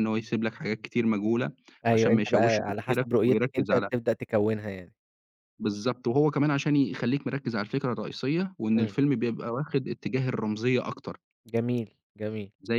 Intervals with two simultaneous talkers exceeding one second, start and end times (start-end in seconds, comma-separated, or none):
1.9-3.9